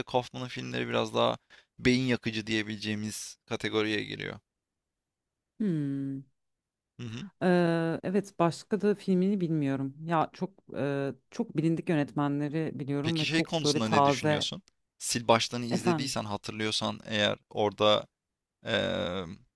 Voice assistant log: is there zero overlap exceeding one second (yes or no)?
no